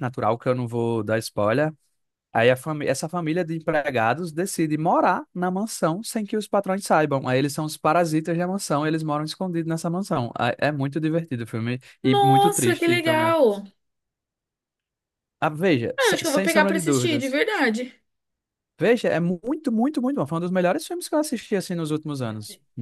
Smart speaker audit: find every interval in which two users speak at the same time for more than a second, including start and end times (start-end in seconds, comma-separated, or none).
12.0-13.3, 16.0-17.4